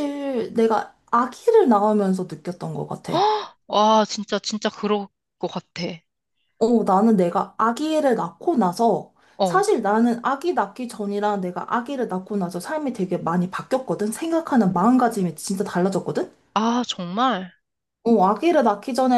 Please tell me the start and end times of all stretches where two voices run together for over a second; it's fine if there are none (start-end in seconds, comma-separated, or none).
none